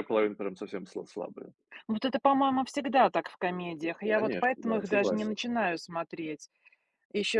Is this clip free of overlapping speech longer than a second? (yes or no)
no